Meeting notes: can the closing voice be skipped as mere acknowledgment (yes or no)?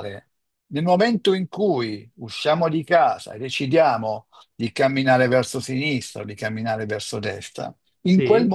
yes